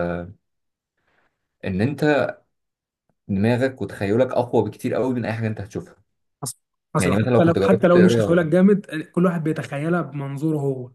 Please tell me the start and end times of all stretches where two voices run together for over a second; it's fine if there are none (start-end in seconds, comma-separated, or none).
7.0-8.5